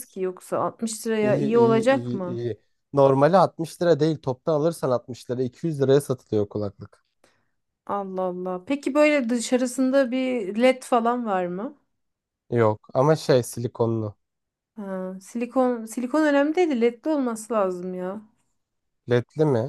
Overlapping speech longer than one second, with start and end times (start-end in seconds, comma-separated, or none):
1.2-2.5